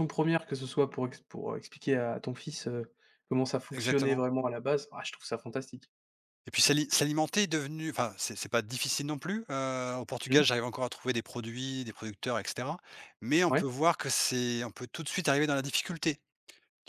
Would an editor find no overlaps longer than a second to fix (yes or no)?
yes